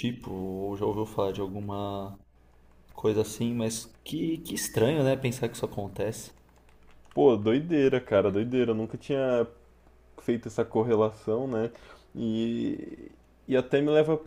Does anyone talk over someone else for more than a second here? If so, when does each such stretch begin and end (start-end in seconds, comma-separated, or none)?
none